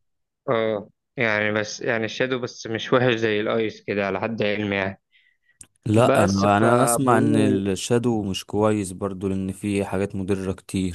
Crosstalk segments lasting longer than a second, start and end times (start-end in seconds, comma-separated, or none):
5.9-7.6